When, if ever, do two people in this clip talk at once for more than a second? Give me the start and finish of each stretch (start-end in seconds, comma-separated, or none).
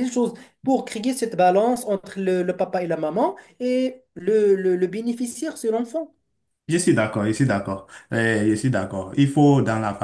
none